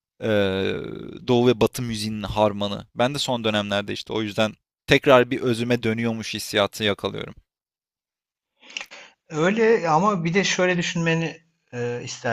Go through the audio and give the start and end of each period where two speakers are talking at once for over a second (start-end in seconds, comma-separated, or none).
none